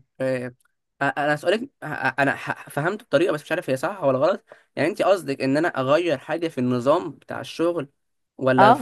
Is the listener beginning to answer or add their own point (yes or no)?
yes